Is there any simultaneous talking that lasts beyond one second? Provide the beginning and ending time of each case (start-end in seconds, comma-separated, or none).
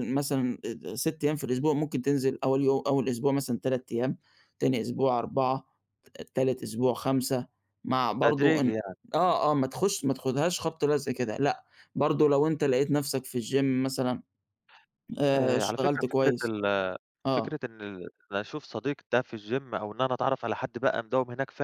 15.3-16.5